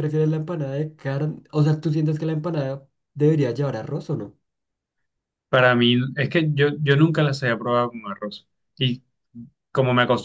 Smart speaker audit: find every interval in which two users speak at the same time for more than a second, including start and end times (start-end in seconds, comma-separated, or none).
none